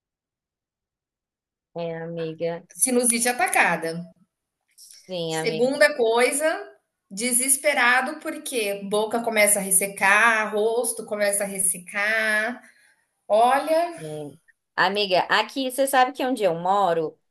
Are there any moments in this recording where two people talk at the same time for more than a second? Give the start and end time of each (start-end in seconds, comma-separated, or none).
none